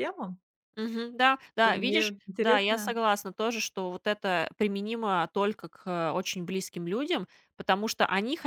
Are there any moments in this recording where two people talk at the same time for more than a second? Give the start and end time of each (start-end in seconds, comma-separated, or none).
1.6-3.0